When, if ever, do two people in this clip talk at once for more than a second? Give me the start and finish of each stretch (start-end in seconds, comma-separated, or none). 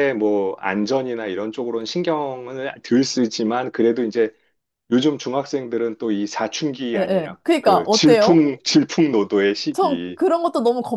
7.0-8.4